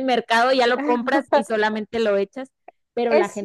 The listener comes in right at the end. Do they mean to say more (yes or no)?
no